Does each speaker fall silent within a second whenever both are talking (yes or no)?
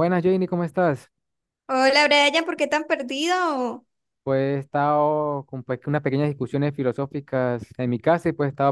yes